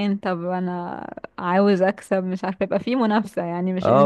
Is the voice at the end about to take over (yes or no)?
yes